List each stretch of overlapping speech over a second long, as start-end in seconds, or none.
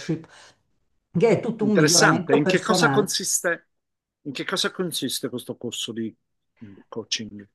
1.6-3.2